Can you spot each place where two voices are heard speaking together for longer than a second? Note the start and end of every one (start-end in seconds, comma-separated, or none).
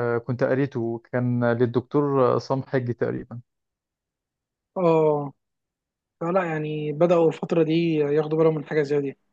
none